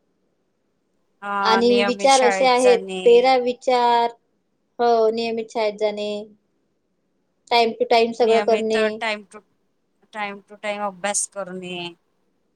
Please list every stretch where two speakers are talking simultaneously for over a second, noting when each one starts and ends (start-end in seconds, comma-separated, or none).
1.5-3.1